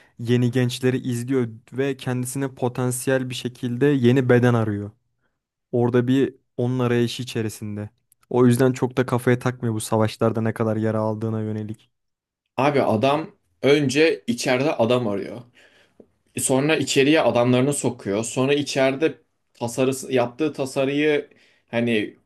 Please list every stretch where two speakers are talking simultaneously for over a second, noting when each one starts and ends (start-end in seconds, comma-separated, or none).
none